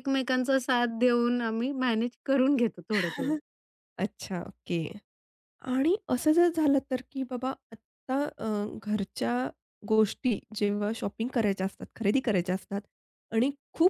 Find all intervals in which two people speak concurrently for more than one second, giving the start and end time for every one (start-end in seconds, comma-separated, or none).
none